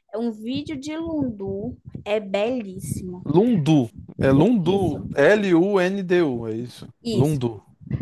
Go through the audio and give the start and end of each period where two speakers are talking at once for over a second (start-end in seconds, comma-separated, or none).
none